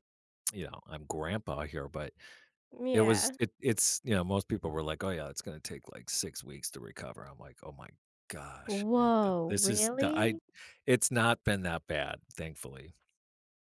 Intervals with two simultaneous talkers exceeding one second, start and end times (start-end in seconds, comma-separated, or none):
8.7-10.3